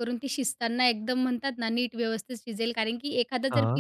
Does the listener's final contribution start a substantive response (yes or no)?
no